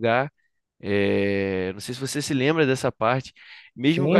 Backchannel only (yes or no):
yes